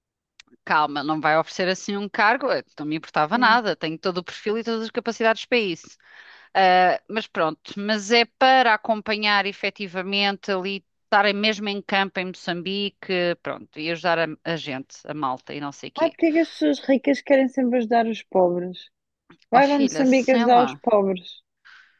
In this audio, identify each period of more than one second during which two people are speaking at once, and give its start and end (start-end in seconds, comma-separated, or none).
19.5-20.8